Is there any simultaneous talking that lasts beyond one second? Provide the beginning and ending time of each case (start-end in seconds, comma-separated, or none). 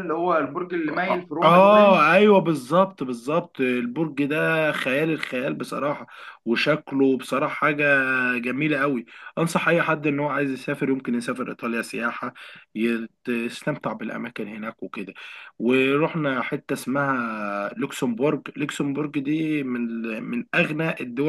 none